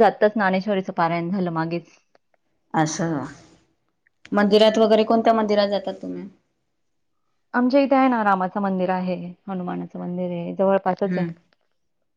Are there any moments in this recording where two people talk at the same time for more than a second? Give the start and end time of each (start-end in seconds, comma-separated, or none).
10.0-11.2